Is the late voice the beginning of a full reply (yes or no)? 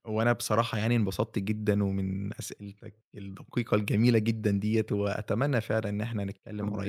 no